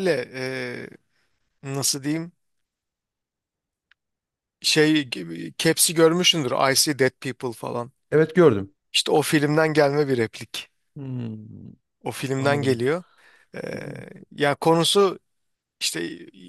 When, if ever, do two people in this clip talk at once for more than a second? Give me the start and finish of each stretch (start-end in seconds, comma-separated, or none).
none